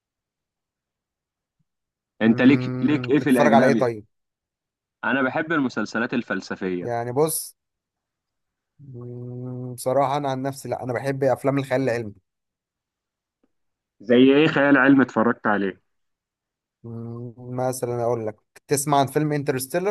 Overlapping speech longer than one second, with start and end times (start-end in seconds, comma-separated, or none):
2.3-3.9